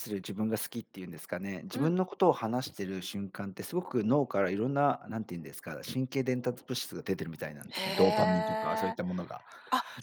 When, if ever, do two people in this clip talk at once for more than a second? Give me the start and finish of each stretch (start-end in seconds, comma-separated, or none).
7.8-9.0